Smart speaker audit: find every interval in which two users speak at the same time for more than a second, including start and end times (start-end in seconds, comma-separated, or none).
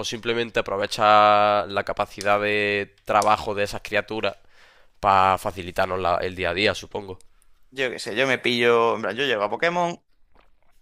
none